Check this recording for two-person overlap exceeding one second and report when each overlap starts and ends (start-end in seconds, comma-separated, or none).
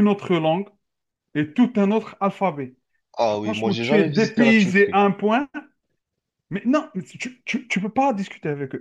3.4-5.0